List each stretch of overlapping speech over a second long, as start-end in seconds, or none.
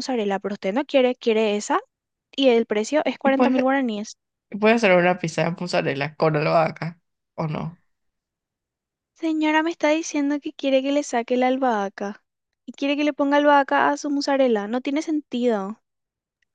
none